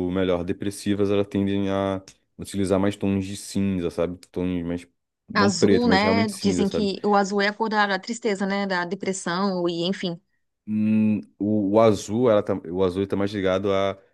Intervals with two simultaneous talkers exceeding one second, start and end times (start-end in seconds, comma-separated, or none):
5.3-6.9